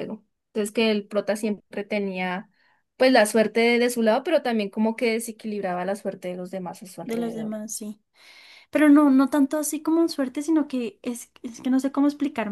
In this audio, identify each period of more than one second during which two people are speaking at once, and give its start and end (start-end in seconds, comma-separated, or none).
none